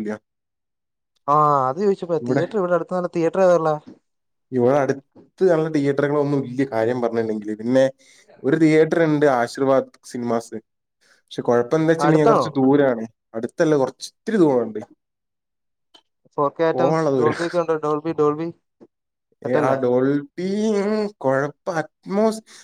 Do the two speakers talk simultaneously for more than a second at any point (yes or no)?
no